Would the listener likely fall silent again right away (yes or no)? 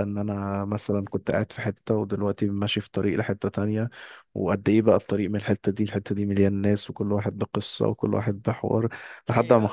yes